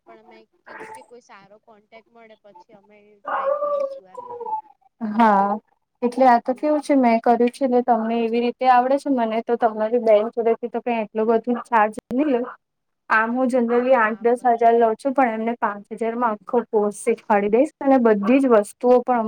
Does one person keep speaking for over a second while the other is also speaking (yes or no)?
no